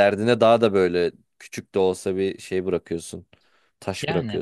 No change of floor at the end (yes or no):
no